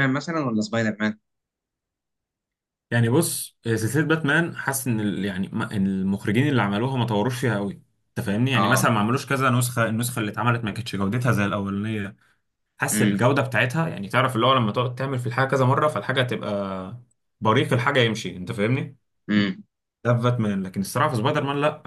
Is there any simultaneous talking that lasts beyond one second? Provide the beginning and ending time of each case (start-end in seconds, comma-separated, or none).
none